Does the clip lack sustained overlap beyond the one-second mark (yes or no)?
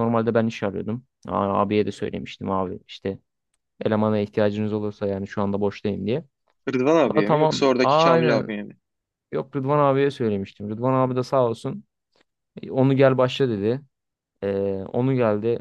no